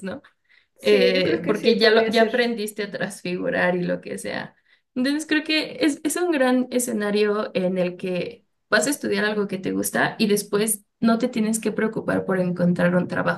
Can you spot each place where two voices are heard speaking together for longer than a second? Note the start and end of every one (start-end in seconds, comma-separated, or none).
0.8-2.6